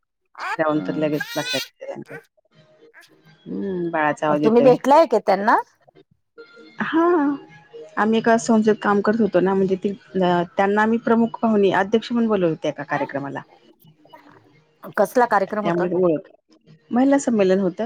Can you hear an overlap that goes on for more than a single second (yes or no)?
no